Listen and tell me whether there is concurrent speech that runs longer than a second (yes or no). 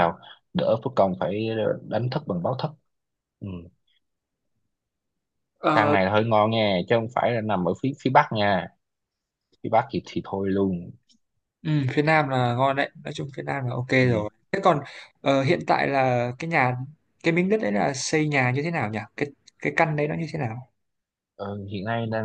no